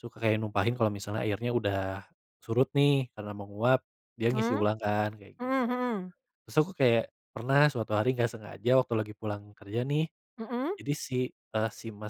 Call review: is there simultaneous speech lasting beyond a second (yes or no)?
no